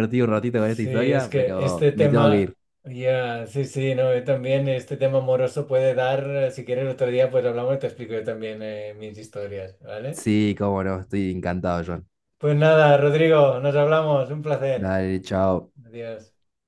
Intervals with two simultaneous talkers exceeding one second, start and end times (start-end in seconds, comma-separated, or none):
0.6-2.5